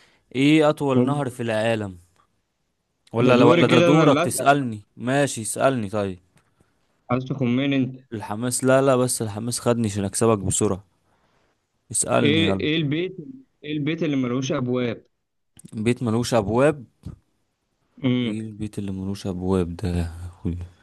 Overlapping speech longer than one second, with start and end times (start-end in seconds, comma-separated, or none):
3.2-4.6